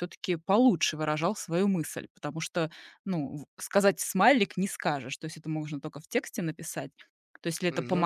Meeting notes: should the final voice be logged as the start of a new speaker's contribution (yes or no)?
no